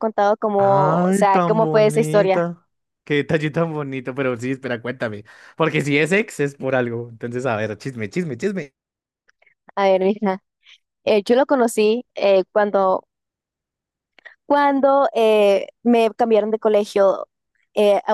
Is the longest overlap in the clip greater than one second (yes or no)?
yes